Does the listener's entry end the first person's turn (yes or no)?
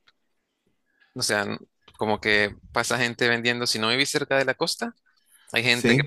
no